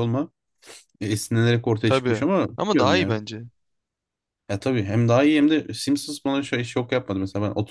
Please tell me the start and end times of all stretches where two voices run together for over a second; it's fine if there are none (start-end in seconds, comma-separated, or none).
1.8-3.2